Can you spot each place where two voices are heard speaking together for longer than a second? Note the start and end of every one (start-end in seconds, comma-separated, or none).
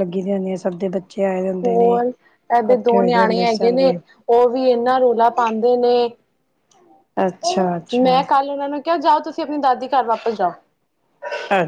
1.6-3.9